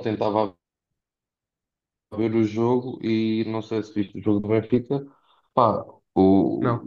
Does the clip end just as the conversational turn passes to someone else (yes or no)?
no